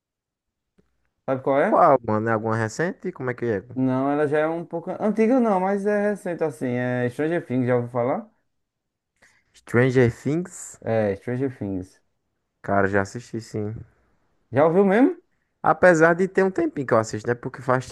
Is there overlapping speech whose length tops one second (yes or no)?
no